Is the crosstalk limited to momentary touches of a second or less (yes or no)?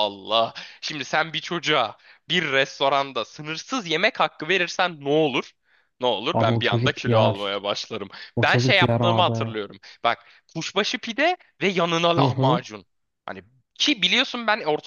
no